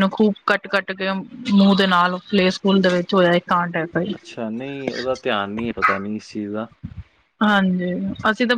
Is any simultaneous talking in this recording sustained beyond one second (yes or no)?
no